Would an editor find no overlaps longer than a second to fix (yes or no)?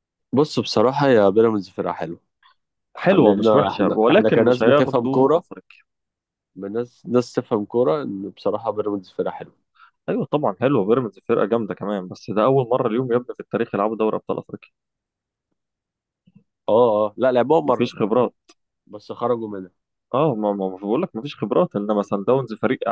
no